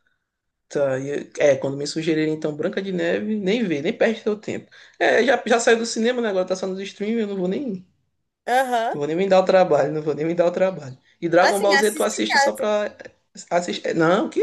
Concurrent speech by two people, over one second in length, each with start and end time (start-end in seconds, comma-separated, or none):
11.4-12.6